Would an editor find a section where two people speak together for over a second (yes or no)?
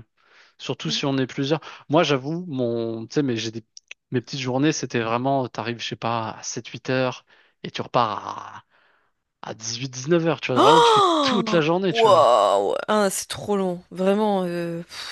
yes